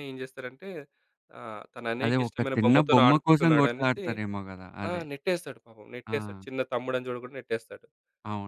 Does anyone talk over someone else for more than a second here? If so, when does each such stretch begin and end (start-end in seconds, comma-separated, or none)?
2.0-4.0